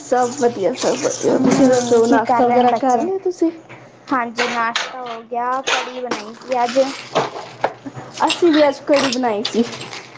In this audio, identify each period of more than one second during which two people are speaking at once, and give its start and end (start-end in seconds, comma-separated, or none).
1.3-3.0